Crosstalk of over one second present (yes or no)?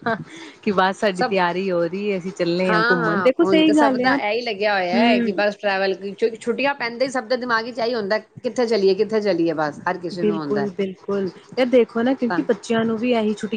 yes